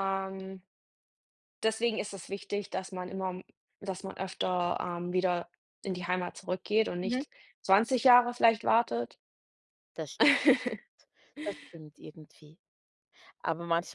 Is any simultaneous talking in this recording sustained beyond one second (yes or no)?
no